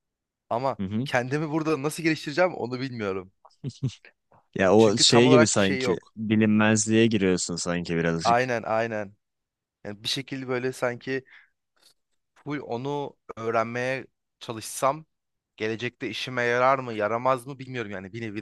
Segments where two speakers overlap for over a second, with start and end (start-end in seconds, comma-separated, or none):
4.8-6.1